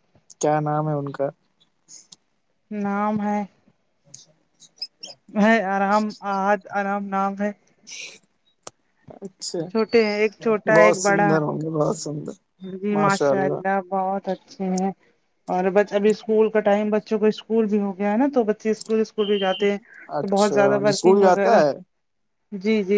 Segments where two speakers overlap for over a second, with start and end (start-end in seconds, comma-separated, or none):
20.2-21.6